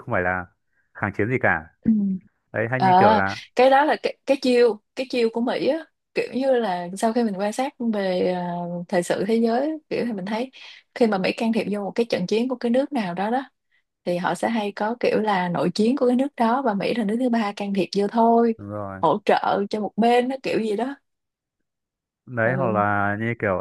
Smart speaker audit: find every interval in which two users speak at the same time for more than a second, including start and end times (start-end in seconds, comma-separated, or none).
none